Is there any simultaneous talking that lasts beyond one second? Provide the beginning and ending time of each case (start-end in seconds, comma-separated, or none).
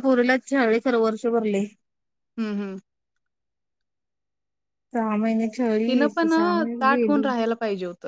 5.9-7.2